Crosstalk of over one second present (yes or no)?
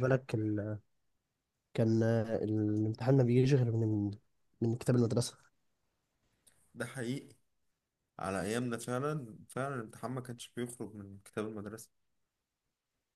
no